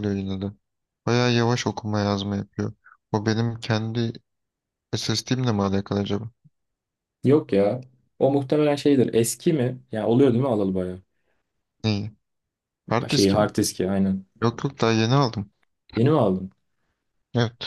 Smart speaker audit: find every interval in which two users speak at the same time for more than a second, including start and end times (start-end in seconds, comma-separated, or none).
none